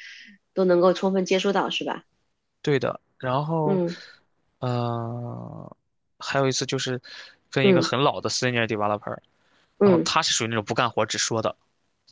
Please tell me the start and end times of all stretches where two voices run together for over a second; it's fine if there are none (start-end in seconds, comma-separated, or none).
none